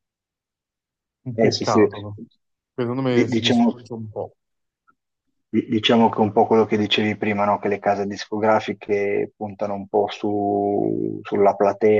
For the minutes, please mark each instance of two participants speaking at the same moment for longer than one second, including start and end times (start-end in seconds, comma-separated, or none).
none